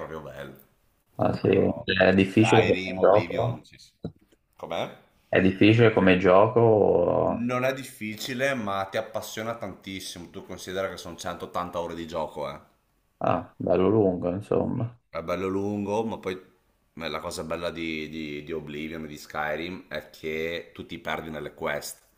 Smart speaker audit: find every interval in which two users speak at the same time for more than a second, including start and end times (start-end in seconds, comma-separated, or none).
1.2-3.6